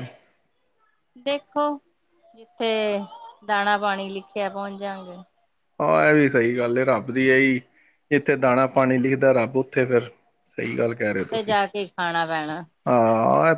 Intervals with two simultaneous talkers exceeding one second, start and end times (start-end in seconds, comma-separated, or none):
none